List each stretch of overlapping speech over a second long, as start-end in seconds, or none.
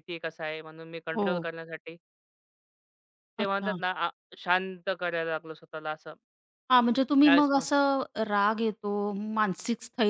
none